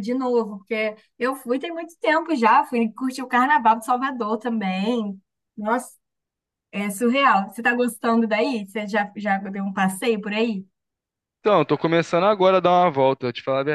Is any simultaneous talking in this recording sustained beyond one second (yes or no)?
no